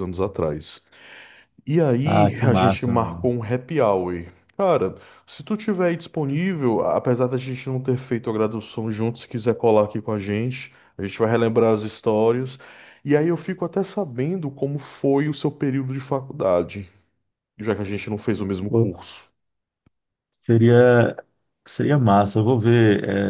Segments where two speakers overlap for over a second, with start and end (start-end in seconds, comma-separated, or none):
2.0-3.3